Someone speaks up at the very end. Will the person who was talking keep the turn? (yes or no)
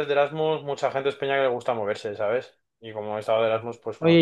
no